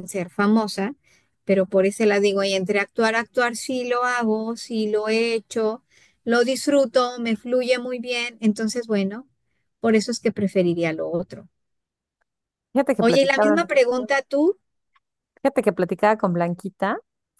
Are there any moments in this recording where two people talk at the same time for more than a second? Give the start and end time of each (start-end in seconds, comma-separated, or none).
none